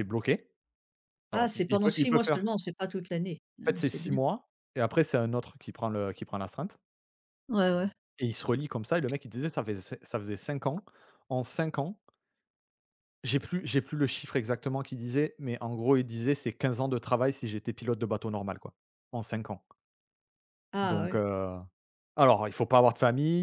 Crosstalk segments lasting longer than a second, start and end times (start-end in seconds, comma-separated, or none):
1.3-2.5